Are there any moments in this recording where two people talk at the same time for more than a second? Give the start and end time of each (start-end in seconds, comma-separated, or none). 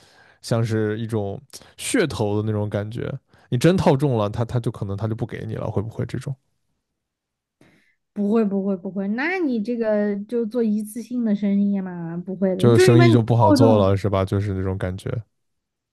12.6-13.9